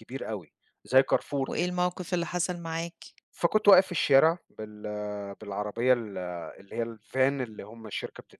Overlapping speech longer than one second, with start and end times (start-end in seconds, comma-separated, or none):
none